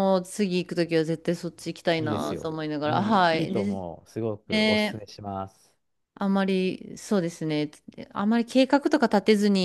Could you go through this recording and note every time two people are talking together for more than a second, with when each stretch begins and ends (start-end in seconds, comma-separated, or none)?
2.0-3.8